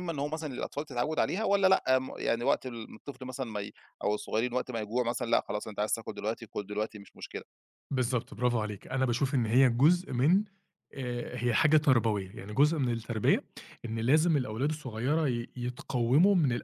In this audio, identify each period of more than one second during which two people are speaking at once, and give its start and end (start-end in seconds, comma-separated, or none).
none